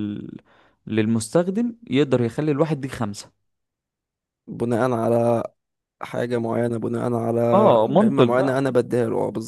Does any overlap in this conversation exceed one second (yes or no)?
yes